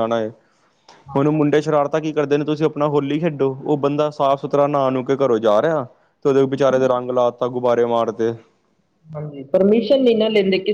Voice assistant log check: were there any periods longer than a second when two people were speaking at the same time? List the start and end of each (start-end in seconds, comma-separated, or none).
none